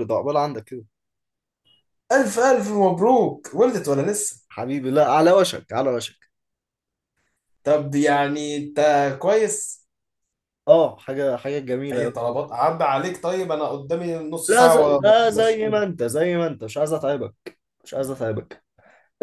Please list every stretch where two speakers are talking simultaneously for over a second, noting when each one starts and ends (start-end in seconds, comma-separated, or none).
14.5-15.8